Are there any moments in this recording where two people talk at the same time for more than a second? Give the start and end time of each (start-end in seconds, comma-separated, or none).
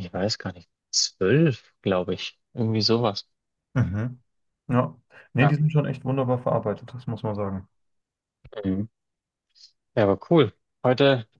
none